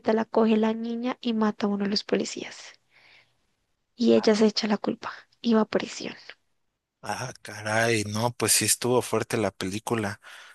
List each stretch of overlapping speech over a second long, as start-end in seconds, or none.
none